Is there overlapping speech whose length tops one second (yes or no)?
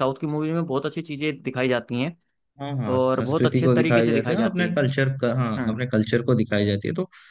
yes